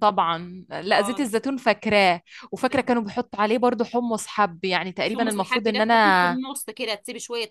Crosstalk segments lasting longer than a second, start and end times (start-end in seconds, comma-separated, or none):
5.0-6.4